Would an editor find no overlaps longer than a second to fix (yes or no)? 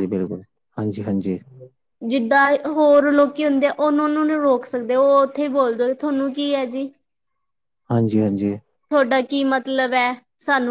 yes